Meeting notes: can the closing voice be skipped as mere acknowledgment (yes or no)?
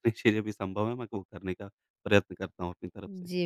no